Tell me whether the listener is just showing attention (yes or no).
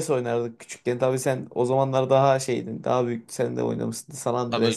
no